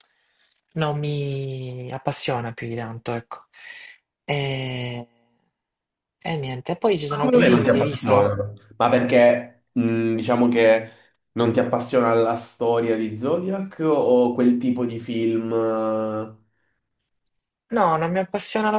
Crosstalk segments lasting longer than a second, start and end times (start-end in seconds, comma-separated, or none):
7.1-8.3